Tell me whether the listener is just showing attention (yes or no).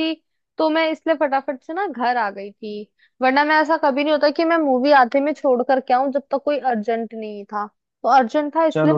no